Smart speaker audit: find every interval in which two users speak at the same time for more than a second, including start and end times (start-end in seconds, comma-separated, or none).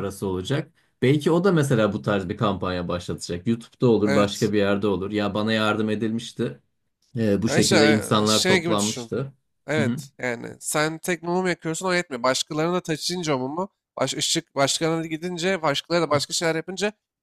7.5-9.1